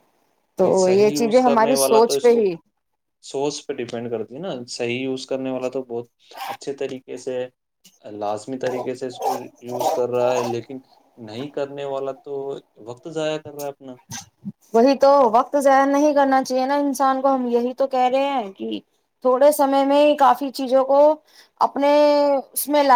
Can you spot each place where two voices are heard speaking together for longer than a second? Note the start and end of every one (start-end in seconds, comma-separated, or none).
0.6-2.5